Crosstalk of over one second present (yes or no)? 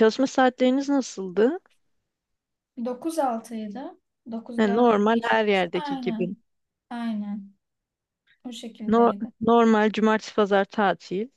yes